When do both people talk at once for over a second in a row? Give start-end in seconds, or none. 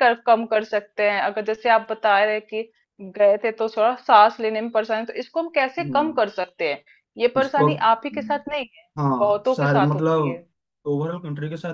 9.0-10.4